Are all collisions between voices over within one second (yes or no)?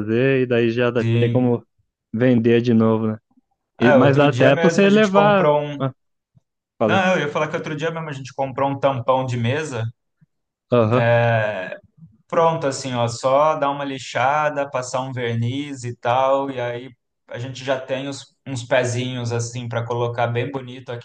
no